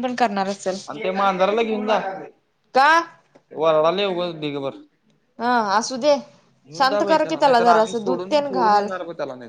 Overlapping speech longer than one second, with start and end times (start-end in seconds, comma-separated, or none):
7.0-8.9